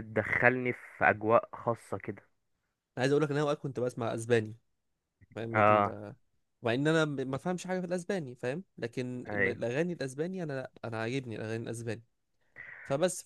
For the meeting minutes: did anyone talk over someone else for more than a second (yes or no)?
no